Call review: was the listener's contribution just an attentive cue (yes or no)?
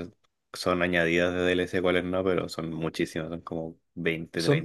no